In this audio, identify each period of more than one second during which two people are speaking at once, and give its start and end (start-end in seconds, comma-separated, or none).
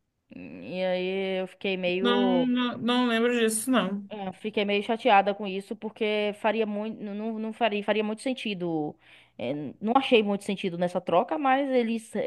none